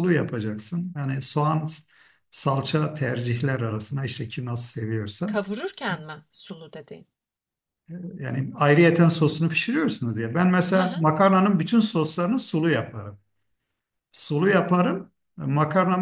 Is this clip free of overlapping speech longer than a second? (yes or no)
yes